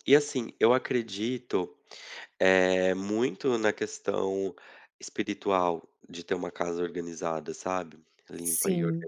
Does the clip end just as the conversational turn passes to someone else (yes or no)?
no